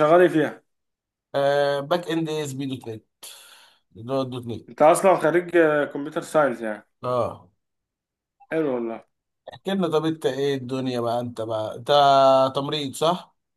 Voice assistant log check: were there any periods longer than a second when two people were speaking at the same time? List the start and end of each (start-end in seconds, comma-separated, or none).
none